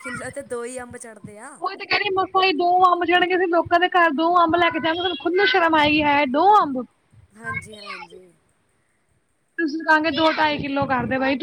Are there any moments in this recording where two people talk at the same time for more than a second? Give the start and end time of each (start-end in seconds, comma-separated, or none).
none